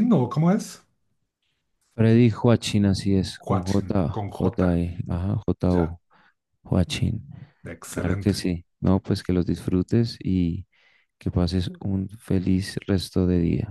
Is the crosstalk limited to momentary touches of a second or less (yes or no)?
no